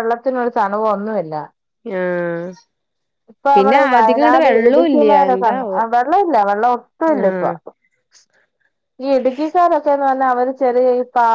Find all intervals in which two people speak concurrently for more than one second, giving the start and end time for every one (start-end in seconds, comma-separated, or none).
3.6-5.3